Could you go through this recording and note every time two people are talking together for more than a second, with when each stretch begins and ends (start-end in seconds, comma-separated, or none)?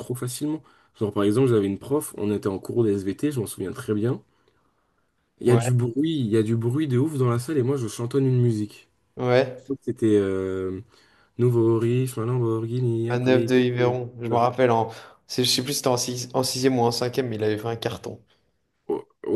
13.1-14.4